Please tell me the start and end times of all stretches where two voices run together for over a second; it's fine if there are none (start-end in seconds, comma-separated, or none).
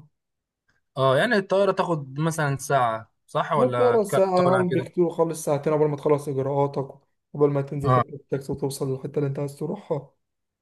3.5-4.9